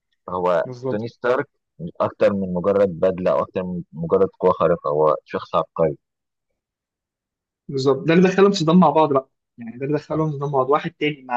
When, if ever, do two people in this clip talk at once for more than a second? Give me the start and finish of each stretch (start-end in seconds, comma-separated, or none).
none